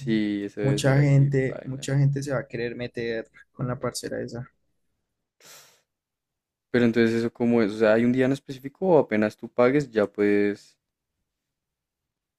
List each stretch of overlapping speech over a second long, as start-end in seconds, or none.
0.6-1.9